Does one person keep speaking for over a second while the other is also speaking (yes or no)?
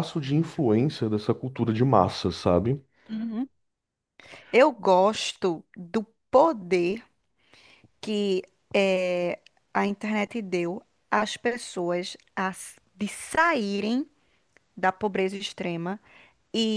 no